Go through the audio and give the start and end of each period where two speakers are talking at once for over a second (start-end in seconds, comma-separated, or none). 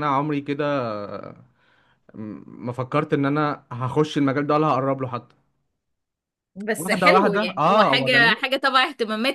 6.8-8.5